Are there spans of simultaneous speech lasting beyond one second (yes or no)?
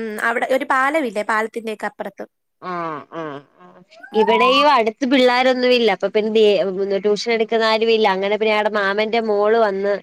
no